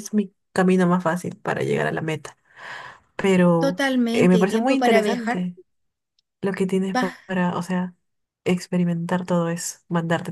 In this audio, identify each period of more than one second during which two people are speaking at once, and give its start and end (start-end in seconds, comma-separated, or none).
3.6-5.5